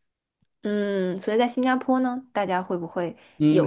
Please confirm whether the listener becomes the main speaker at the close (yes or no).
yes